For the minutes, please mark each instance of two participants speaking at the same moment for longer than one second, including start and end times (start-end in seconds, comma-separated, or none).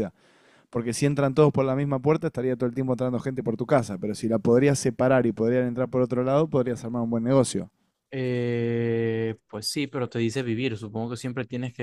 none